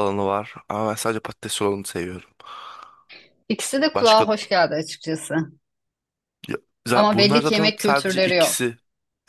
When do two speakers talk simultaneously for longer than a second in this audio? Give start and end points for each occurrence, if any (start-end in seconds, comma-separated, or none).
6.9-8.6